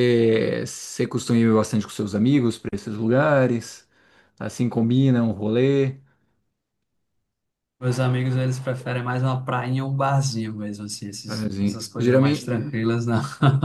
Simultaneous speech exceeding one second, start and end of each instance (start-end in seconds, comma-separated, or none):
11.2-12.5